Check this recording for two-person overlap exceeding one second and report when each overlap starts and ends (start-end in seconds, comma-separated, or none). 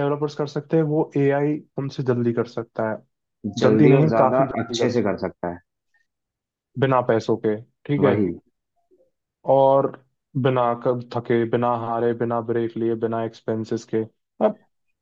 3.6-5.1